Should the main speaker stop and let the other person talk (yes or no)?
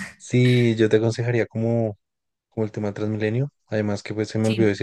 no